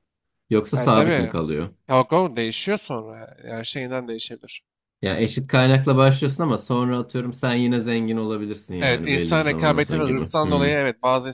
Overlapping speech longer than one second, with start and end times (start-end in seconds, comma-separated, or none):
8.8-10.8